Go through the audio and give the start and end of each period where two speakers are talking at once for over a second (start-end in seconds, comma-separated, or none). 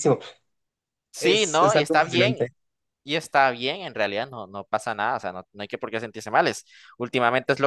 1.2-2.4